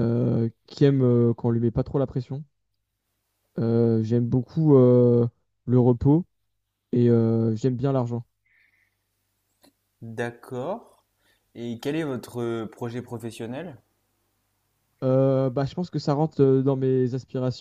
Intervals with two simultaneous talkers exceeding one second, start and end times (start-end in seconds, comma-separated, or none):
none